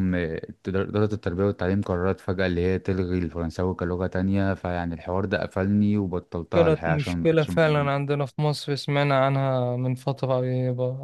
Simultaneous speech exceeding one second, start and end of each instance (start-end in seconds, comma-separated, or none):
6.5-7.9